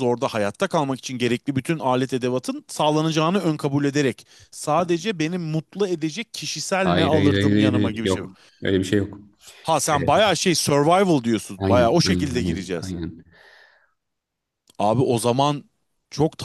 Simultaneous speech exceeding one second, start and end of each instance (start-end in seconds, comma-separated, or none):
6.8-8.2, 11.6-12.9